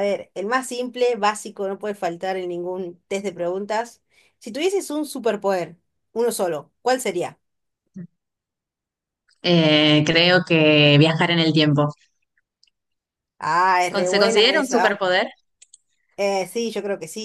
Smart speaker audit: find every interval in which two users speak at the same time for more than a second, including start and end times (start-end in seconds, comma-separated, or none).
13.9-15.1